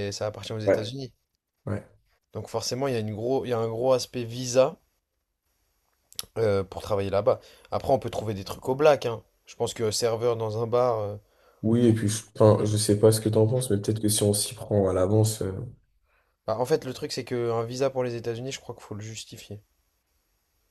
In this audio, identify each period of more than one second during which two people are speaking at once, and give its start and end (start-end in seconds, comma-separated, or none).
none